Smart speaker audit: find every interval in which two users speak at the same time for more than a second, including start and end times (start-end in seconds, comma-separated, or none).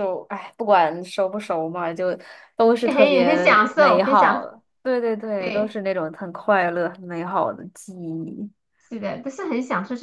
2.8-4.5